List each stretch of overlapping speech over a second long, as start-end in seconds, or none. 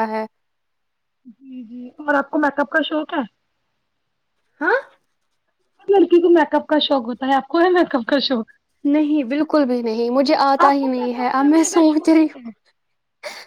10.6-12.4